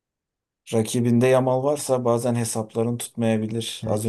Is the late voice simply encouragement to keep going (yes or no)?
no